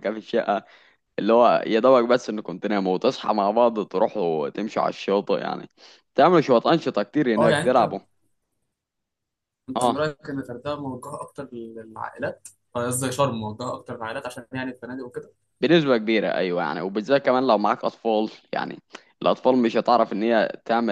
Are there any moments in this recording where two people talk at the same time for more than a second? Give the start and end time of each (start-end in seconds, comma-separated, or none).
none